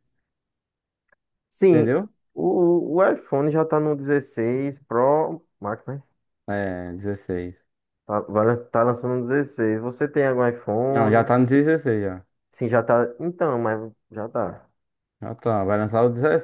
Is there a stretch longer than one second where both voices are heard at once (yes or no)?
no